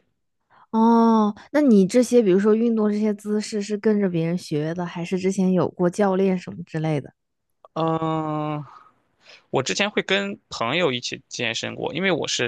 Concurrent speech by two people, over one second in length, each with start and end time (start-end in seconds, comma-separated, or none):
none